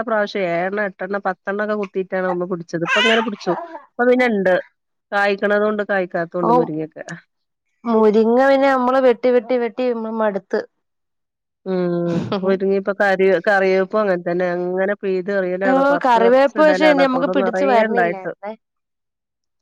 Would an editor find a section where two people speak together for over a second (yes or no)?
yes